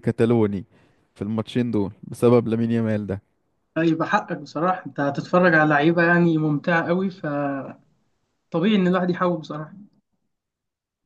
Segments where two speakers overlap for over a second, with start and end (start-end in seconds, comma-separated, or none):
none